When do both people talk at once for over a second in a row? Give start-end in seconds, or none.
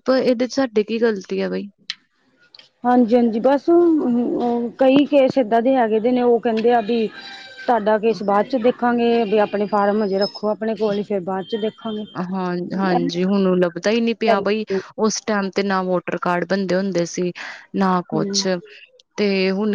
none